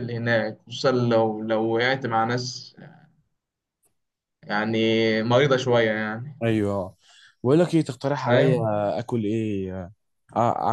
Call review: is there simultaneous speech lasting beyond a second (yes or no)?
no